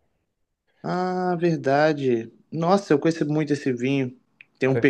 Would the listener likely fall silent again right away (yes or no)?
yes